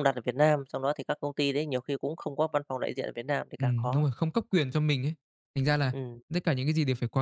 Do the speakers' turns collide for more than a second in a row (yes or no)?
no